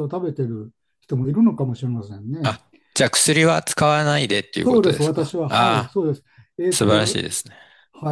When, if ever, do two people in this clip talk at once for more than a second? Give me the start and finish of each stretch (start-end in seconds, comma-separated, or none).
4.6-6.0